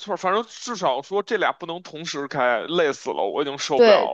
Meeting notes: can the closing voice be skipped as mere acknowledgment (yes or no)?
no